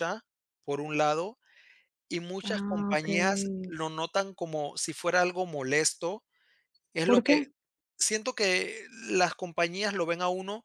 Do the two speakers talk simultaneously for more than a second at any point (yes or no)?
yes